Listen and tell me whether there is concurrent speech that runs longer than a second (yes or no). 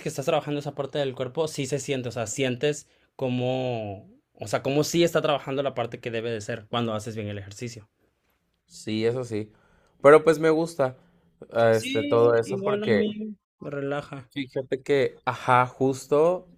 yes